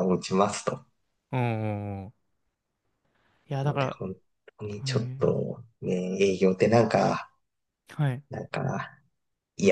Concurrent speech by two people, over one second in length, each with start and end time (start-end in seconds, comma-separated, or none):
none